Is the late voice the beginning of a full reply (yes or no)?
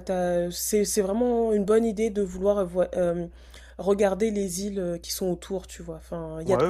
yes